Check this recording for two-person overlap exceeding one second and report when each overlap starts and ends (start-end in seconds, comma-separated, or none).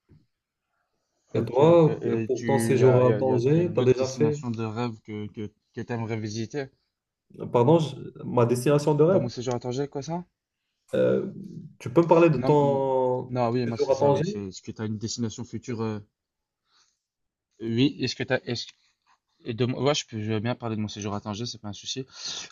1.4-4.4, 12.4-14.4